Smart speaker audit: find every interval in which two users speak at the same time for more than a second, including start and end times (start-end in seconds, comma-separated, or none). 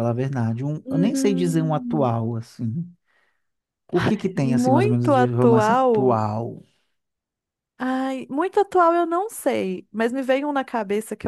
0.8-2.1, 4.3-6.2